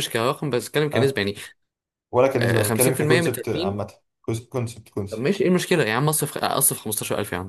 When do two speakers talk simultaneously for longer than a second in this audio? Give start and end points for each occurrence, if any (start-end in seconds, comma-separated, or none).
2.4-3.8